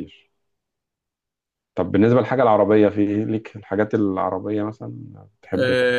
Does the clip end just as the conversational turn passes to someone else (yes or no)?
yes